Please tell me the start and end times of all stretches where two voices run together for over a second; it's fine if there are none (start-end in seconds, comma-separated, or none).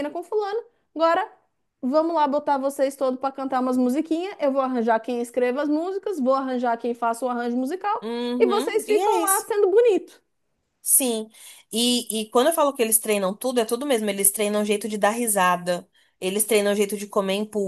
8.0-9.4